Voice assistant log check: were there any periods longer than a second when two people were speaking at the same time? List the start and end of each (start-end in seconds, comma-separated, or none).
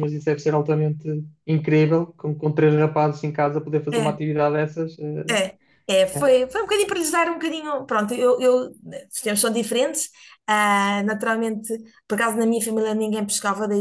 none